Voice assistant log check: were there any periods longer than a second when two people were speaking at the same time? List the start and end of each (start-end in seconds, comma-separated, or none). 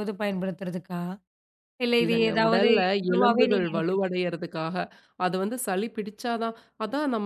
2.0-4.1